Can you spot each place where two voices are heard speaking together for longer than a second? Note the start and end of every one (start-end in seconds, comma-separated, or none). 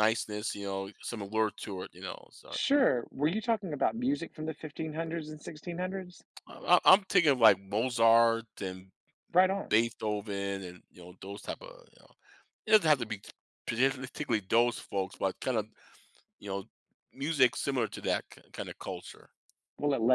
none